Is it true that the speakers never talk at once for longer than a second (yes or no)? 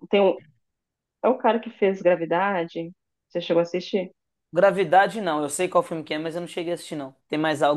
yes